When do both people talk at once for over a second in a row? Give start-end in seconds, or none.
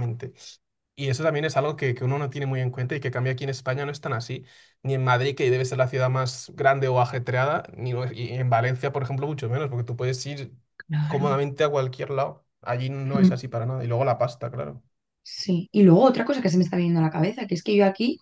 none